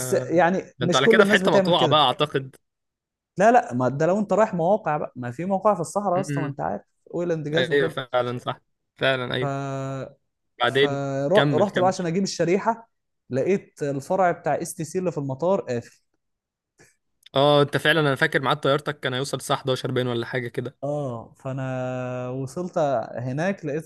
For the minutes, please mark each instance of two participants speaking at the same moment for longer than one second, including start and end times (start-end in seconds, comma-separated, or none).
0.8-2.0, 10.7-12.1